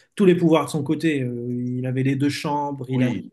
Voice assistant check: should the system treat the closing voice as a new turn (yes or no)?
no